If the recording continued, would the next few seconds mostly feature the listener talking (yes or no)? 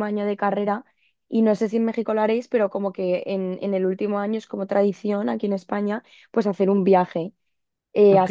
no